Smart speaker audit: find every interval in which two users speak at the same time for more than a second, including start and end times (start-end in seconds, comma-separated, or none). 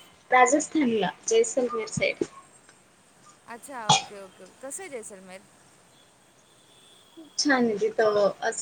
none